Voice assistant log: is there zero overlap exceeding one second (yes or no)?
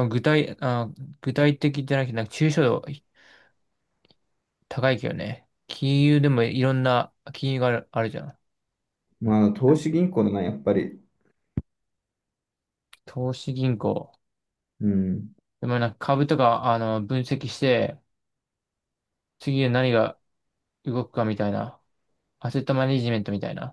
yes